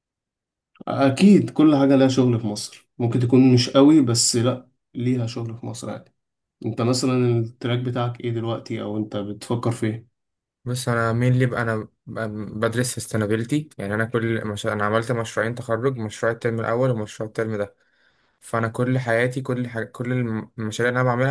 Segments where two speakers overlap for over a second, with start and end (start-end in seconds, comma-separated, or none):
none